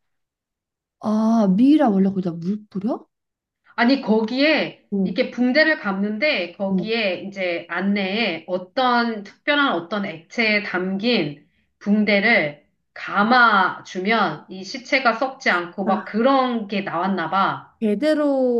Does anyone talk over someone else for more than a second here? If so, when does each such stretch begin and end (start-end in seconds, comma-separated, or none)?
none